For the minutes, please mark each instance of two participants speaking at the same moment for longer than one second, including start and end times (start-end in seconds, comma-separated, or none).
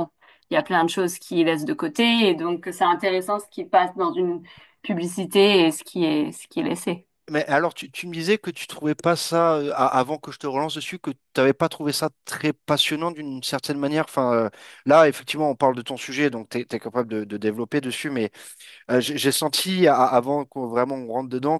none